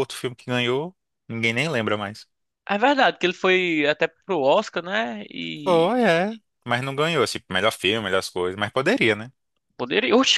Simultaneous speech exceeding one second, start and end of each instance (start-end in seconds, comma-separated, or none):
none